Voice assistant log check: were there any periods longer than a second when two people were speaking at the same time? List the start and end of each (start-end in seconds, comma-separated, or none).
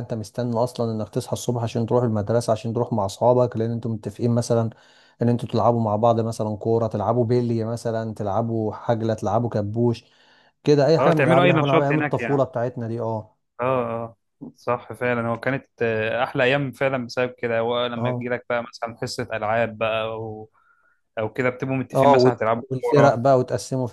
11.0-12.4, 21.9-23.4